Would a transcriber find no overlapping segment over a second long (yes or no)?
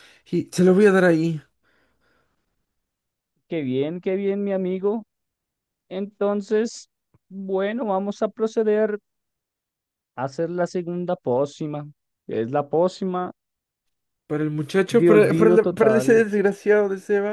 no